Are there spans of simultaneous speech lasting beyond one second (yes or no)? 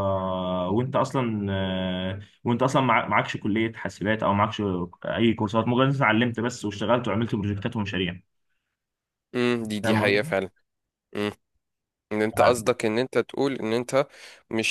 no